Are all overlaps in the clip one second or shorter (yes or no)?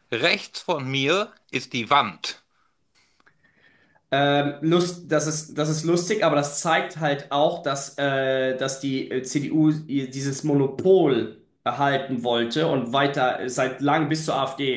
yes